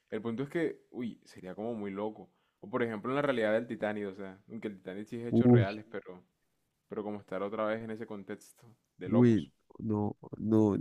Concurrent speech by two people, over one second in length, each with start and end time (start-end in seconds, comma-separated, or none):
none